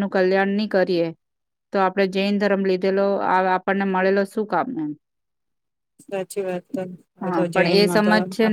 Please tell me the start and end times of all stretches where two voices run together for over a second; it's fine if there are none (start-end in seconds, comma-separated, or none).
none